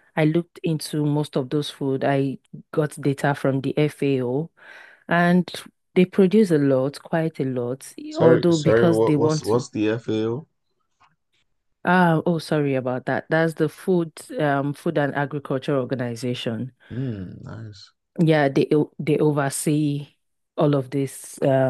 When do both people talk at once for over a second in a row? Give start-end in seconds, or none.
8.1-9.7